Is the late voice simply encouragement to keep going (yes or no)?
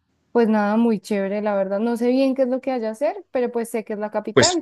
no